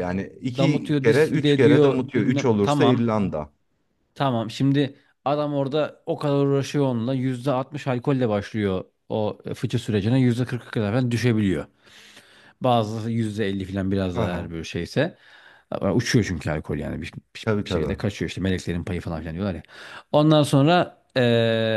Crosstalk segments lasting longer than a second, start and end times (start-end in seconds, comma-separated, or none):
0.6-3.1